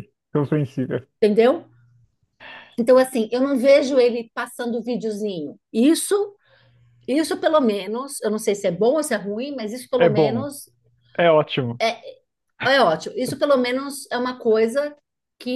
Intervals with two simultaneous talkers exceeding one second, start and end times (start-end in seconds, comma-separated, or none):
none